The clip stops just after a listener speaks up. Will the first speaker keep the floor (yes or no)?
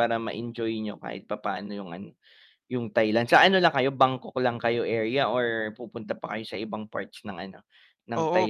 no